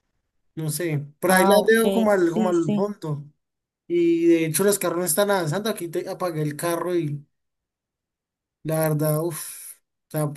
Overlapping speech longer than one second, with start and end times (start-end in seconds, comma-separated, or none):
1.3-2.9